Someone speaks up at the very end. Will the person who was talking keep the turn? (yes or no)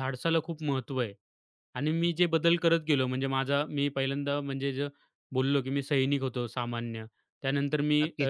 no